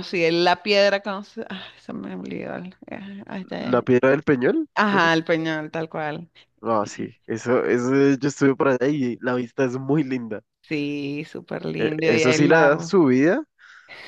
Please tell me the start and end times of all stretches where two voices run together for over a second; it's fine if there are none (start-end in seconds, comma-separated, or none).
11.8-13.0